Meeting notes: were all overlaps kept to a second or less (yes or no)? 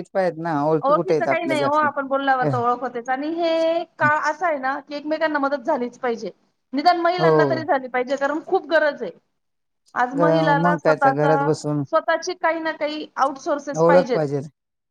no